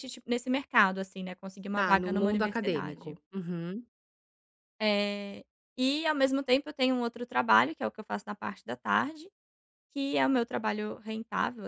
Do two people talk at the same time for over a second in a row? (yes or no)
yes